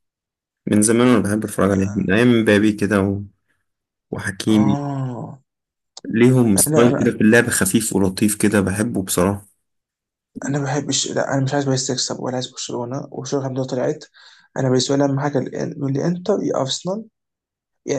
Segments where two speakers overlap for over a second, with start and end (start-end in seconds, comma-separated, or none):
none